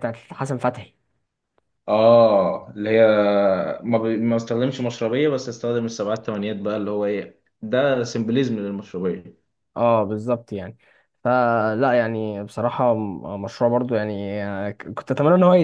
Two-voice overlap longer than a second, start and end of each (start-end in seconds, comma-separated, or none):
none